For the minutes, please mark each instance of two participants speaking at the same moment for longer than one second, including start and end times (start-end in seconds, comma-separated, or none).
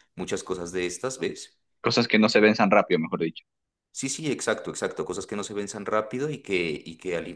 none